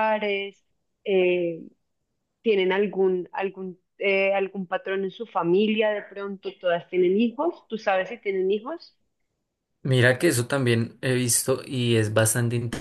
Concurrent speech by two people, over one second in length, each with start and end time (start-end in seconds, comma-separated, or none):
none